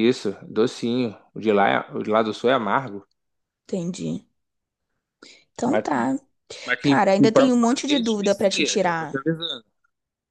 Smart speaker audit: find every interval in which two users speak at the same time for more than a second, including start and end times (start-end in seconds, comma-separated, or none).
6.8-9.2